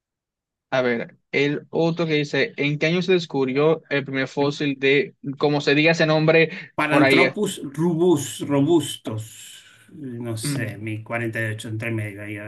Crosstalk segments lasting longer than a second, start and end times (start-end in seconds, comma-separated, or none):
none